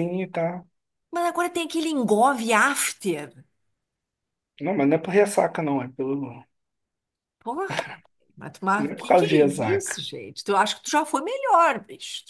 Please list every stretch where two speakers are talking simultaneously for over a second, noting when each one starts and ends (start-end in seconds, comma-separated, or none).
8.8-10.0